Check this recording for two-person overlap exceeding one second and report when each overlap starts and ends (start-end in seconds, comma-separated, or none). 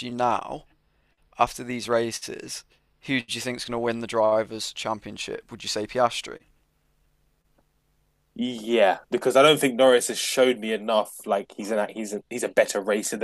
none